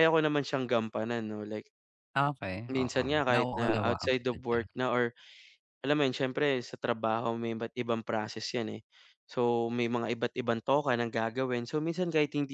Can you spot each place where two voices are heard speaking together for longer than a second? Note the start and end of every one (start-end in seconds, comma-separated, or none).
2.7-4.7